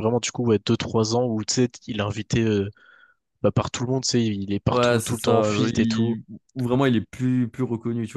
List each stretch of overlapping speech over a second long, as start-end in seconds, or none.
4.7-6.2